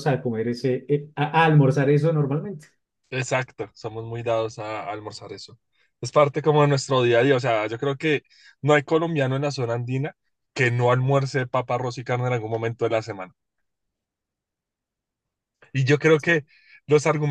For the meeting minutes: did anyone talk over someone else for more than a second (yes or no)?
no